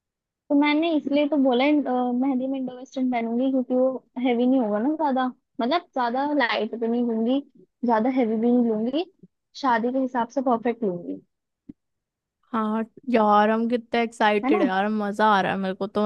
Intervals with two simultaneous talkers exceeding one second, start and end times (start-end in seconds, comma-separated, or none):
none